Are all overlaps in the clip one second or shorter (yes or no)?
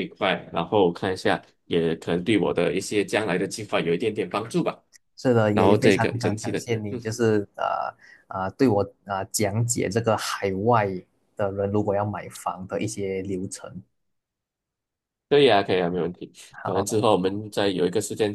no